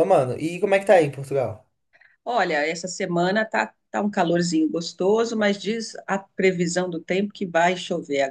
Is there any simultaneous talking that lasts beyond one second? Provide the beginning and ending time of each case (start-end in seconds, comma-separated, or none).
none